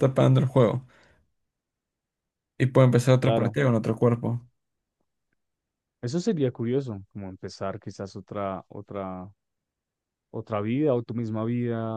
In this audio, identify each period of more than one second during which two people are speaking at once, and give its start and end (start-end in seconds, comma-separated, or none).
none